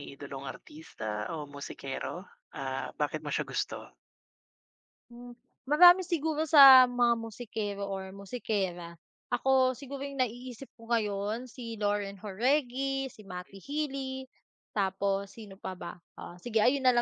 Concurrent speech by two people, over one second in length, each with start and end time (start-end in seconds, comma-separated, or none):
none